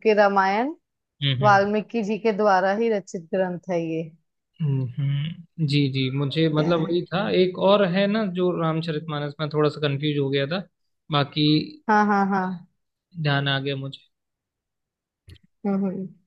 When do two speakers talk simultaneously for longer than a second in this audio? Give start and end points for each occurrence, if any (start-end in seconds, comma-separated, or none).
none